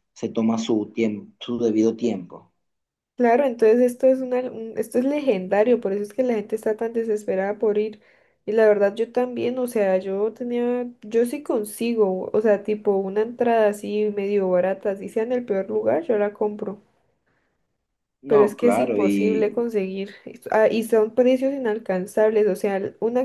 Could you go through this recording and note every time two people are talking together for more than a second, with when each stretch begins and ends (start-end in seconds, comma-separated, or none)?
18.3-19.6